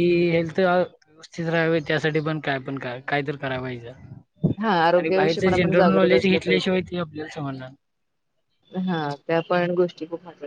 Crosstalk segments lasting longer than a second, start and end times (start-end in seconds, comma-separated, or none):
5.0-6.8